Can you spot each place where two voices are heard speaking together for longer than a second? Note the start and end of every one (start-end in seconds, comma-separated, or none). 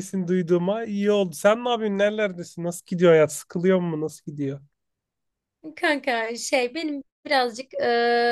none